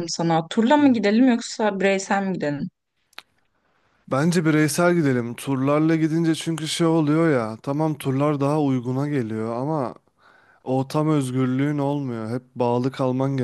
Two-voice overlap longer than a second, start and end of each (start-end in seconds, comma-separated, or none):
none